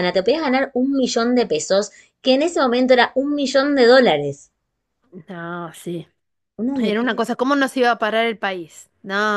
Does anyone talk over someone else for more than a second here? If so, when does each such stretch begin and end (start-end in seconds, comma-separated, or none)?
none